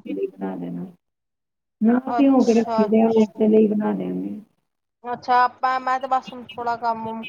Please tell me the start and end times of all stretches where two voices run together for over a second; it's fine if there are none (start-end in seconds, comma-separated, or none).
2.2-3.4